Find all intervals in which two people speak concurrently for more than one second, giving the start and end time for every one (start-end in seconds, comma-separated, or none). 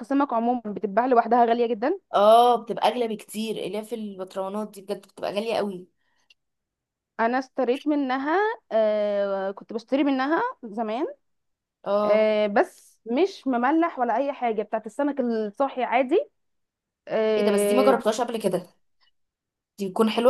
none